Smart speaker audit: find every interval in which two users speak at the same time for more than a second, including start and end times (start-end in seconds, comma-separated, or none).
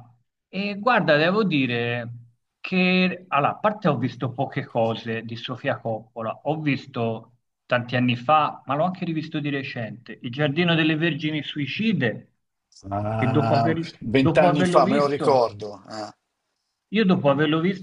13.2-15.5